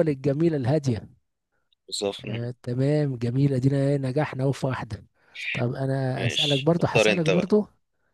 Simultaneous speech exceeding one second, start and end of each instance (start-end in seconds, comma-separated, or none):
6.2-7.5